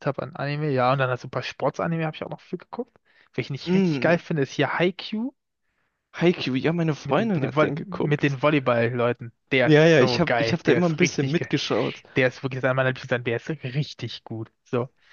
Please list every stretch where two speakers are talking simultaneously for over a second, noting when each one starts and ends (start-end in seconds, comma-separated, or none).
7.0-8.4, 9.6-11.5